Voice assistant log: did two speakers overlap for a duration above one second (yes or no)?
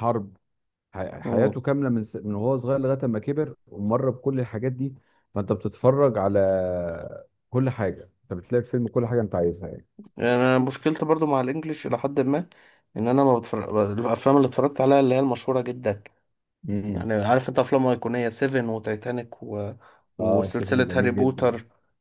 yes